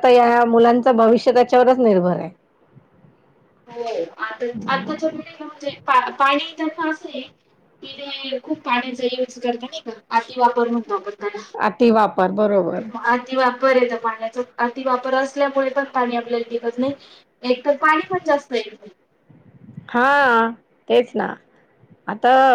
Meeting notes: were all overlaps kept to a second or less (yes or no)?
yes